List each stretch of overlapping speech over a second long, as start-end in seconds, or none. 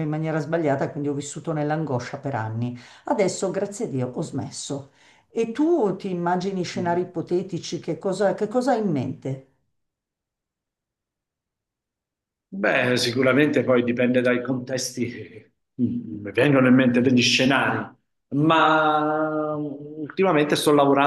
none